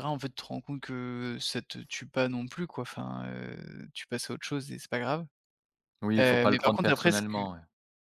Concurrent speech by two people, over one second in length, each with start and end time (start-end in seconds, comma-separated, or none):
6.2-7.4